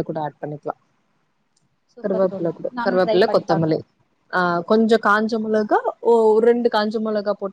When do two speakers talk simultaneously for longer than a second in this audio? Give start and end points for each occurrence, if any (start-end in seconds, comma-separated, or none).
2.0-3.8